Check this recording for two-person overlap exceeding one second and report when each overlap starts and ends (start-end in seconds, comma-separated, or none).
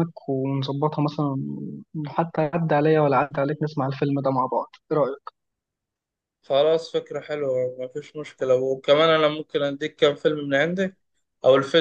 none